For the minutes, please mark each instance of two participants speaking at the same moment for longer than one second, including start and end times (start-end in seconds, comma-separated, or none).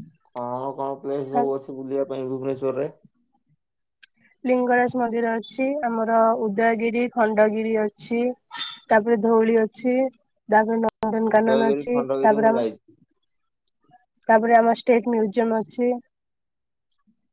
11.3-12.7